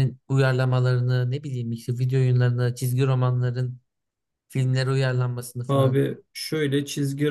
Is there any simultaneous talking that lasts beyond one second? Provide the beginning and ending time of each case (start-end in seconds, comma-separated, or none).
none